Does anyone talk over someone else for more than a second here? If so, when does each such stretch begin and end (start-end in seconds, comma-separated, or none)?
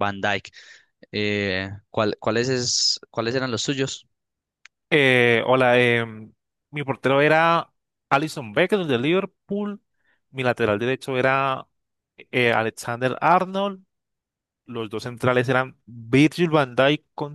none